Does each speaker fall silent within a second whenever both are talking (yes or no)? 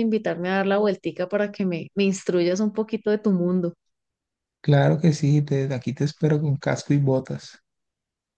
yes